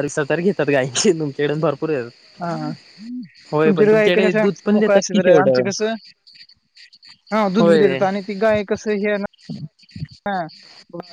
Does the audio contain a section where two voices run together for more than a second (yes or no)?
yes